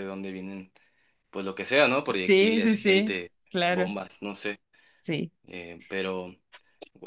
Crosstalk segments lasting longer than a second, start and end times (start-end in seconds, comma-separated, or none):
2.1-3.9